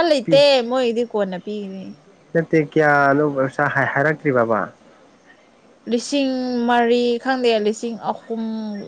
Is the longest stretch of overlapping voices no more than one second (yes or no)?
yes